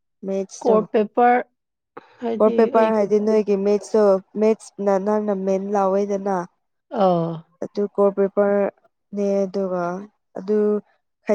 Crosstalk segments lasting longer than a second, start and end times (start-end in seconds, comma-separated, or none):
none